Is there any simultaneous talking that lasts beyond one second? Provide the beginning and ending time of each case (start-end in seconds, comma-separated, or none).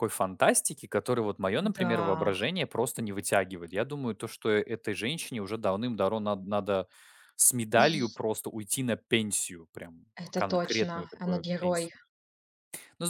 10.1-11.9